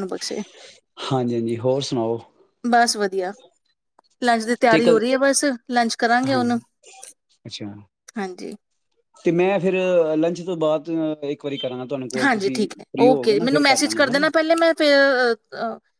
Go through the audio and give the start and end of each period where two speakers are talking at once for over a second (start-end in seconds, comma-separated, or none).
12.2-14.2